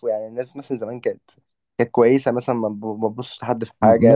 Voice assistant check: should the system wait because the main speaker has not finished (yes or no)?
no